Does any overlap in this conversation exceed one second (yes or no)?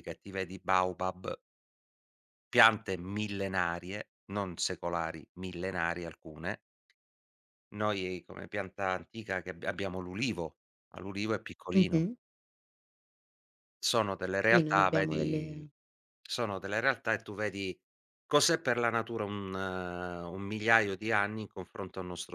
yes